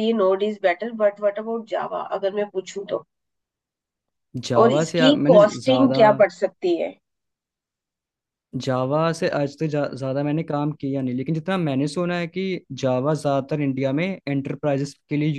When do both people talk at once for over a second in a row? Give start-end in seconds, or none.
4.6-6.0